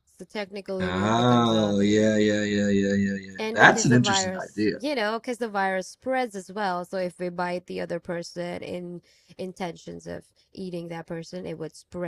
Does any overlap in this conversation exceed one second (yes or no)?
yes